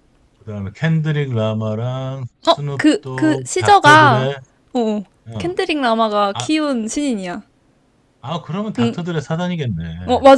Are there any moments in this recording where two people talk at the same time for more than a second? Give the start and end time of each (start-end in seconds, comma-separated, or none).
2.5-4.3